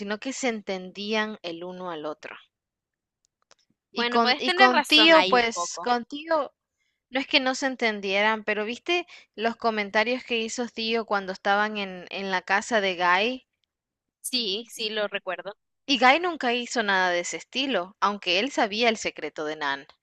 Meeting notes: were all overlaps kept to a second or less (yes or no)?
no